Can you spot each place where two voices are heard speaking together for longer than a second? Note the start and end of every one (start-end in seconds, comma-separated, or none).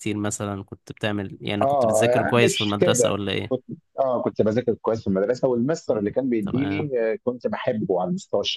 1.6-3.7